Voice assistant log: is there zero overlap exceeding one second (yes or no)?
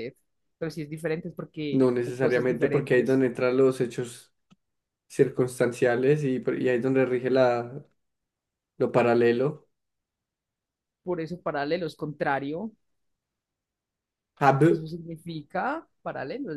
no